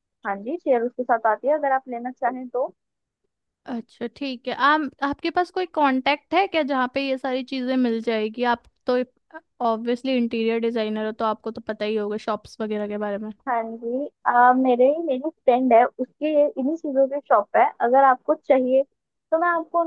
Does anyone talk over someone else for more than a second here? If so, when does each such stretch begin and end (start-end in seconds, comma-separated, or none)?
none